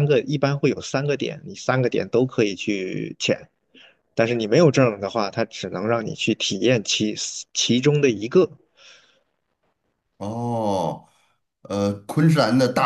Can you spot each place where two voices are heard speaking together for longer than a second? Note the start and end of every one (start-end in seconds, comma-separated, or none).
none